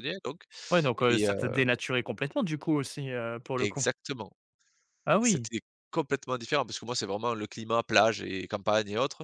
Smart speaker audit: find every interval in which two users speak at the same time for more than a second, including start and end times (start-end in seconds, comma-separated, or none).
none